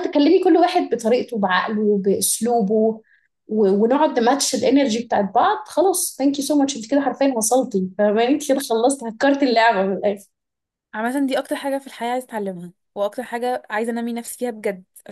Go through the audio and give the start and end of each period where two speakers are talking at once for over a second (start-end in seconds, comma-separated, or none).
none